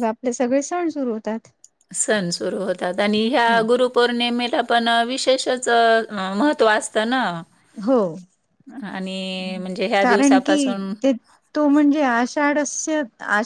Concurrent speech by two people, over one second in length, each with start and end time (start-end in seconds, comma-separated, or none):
none